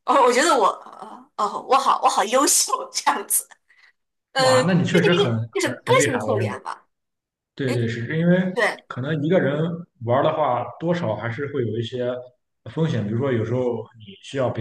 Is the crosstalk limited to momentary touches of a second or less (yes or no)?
no